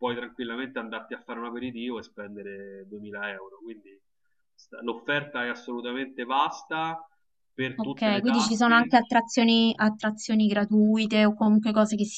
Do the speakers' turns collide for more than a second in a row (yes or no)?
yes